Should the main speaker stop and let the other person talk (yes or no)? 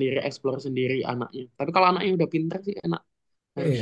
yes